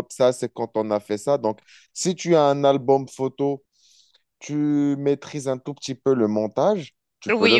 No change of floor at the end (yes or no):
no